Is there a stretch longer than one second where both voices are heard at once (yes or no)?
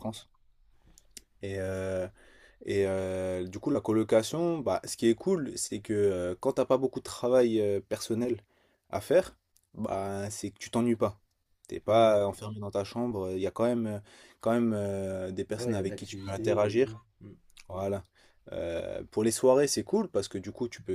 yes